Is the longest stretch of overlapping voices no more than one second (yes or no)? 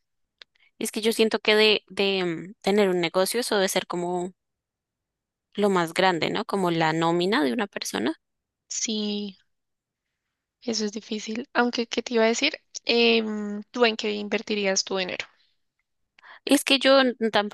yes